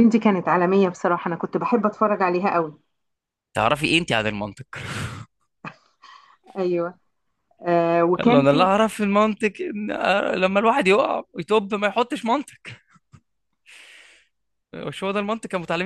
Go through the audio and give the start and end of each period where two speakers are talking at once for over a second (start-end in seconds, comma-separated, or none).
none